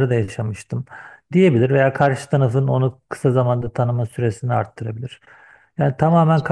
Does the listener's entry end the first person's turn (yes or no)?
no